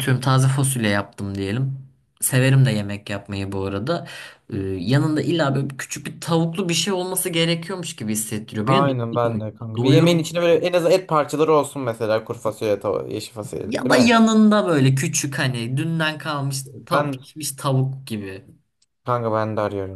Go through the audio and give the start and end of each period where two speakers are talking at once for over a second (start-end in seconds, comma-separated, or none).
8.6-10.4